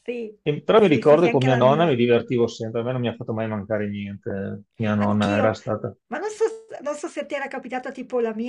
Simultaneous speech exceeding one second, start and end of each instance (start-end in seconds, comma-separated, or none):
0.7-2.0